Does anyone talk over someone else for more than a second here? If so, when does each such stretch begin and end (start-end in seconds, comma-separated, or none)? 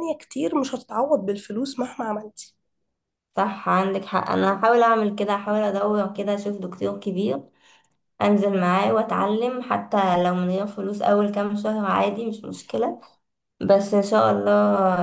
none